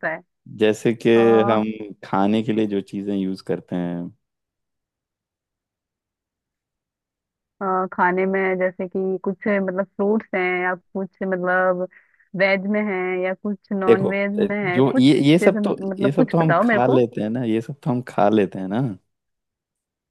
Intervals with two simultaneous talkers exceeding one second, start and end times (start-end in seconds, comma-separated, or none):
14.7-17.0